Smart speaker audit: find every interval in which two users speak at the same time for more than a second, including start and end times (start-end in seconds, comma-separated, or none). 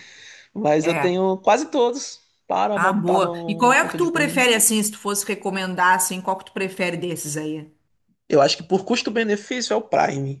2.8-4.4